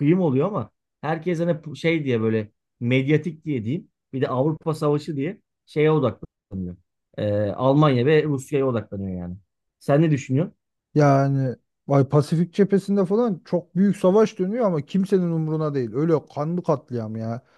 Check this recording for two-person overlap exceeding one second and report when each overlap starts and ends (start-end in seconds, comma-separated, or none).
none